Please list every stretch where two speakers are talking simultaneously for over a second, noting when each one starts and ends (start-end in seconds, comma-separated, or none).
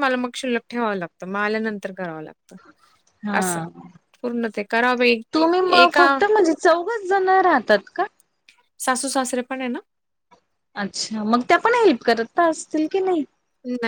none